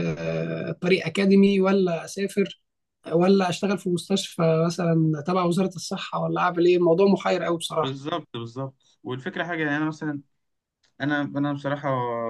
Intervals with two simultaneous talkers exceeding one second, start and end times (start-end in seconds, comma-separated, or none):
none